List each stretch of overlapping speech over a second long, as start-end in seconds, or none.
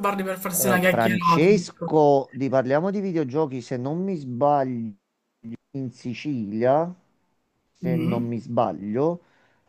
0.5-1.9